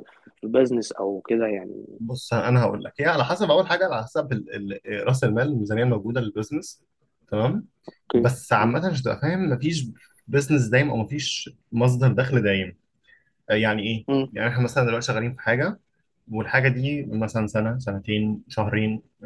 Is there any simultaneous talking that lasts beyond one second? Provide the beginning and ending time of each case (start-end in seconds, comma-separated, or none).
none